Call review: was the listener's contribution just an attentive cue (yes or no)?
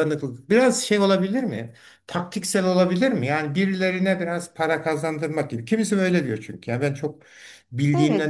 no